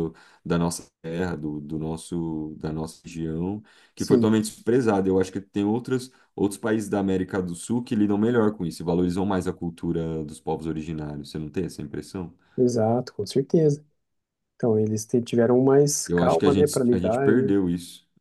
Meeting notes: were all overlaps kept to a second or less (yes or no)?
no